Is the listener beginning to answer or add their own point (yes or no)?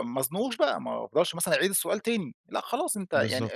no